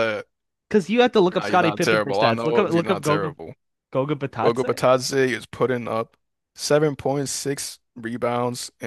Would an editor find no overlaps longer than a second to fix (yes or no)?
no